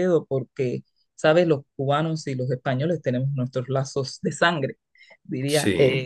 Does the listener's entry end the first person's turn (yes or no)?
no